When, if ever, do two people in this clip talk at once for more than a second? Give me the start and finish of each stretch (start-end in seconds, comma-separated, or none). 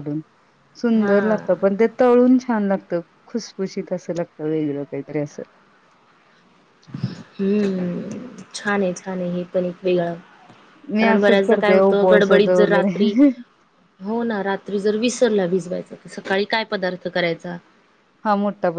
11.0-13.1